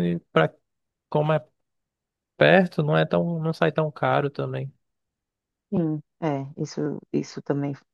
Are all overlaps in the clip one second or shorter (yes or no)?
yes